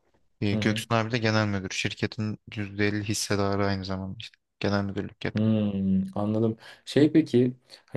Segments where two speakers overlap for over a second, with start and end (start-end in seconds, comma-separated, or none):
none